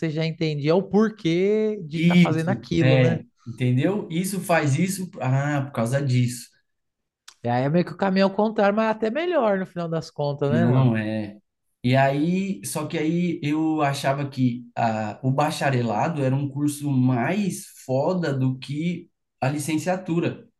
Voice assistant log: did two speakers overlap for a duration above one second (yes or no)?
yes